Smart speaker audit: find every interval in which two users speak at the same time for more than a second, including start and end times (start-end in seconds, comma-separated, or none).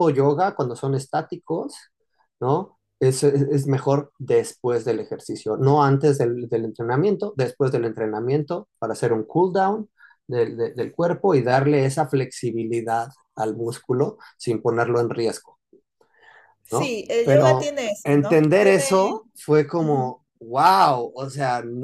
16.7-19.2